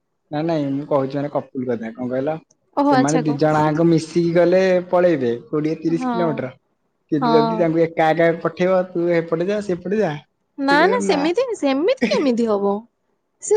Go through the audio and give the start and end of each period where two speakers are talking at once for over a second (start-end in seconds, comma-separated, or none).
none